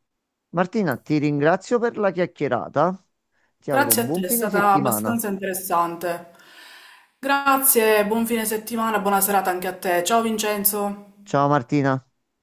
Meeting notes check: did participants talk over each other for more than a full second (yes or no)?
yes